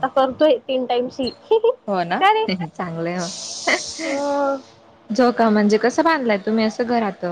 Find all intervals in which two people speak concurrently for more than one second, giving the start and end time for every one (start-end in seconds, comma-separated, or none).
none